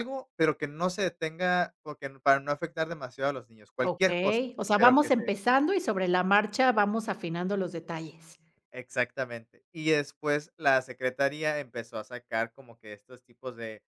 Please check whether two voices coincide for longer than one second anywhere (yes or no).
yes